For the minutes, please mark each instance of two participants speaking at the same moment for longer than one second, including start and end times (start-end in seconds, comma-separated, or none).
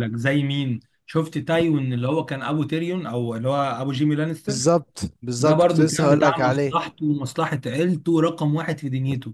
5.4-6.8